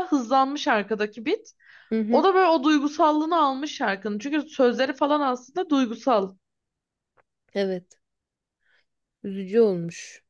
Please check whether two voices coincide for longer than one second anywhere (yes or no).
no